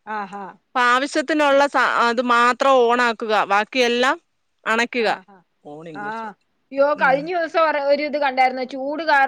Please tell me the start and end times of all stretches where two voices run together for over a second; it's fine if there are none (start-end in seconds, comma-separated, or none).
none